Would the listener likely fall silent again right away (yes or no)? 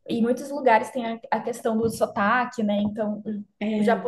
yes